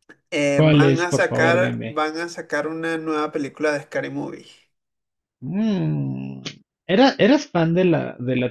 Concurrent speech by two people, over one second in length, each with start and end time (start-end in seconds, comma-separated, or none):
0.5-2.0